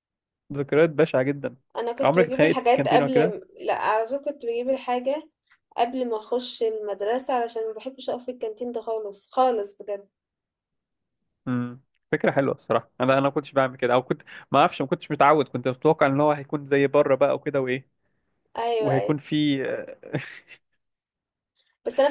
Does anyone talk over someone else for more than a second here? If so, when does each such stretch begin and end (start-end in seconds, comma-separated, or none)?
2.0-3.4